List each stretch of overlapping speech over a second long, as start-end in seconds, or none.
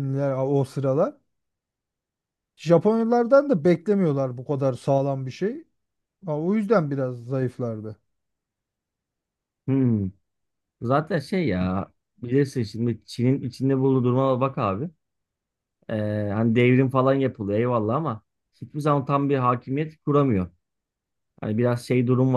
none